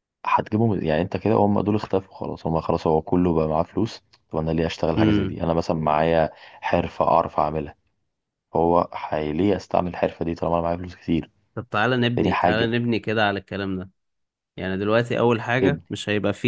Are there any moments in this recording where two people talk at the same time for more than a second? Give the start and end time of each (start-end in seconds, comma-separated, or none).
none